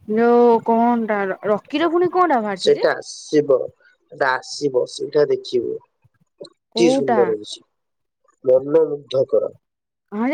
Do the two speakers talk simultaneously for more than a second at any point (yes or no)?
no